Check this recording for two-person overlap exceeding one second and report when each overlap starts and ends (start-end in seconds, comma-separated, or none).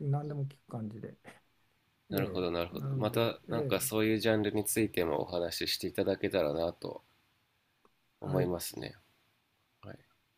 2.1-3.9